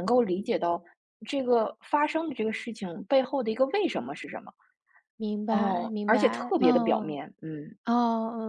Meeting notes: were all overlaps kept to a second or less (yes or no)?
no